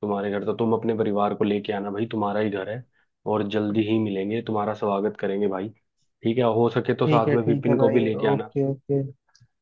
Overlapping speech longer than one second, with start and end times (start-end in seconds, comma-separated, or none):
7.0-8.5